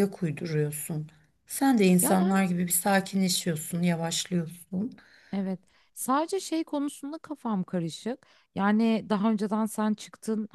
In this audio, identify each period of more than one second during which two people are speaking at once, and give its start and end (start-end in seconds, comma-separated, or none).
none